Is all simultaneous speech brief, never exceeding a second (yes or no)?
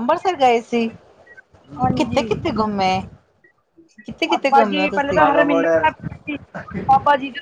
no